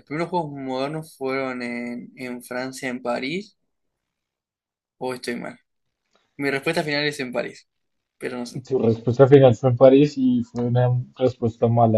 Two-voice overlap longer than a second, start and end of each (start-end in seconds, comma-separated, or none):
none